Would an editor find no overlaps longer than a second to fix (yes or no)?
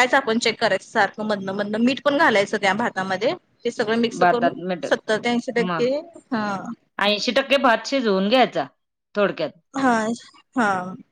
yes